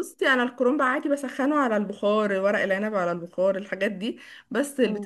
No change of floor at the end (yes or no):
yes